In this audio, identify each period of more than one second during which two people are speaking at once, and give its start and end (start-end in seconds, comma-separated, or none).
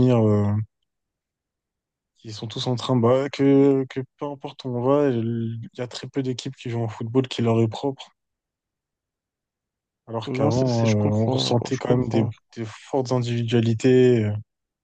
10.2-12.3